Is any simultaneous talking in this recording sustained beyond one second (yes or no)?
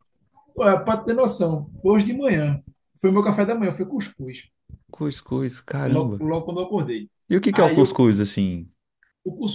no